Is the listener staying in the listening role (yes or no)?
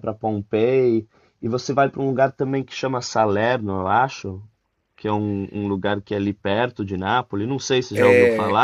no